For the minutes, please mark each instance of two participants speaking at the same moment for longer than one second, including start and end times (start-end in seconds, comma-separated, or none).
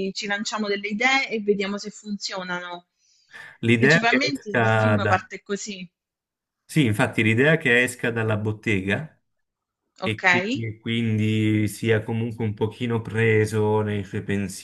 3.7-5.3